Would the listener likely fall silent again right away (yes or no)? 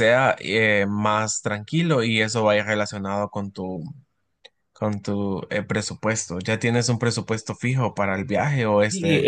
no